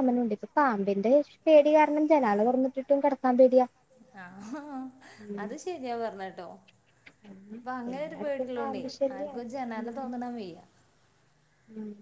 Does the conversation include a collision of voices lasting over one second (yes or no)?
yes